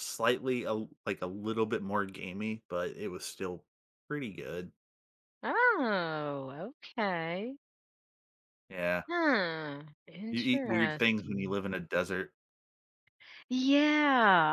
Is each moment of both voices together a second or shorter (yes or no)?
no